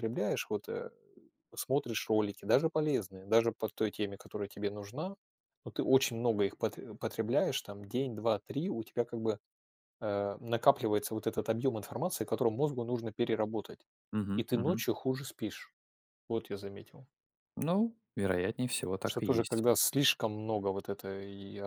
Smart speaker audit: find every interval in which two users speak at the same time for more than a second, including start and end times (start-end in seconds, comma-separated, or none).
none